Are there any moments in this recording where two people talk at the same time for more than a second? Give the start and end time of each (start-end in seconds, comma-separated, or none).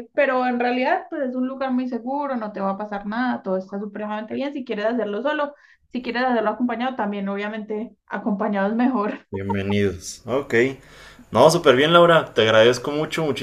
none